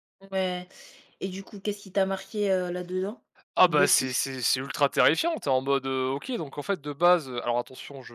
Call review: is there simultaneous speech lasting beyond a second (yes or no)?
no